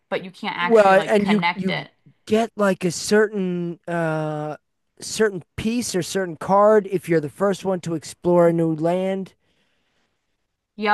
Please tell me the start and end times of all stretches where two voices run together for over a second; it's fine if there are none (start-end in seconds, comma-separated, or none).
0.6-1.9